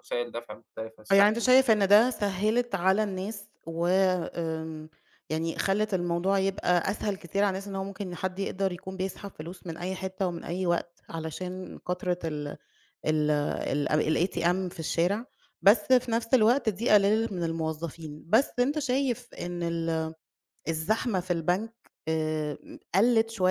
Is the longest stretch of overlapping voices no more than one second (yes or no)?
yes